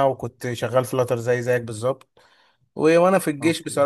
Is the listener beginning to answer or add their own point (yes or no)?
no